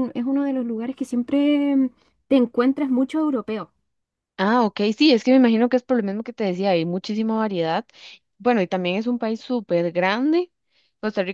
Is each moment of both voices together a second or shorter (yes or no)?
yes